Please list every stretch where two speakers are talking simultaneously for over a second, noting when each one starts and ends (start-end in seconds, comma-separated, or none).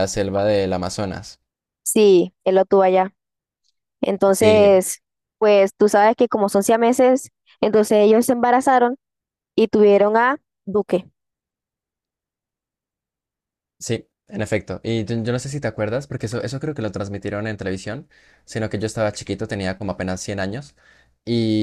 none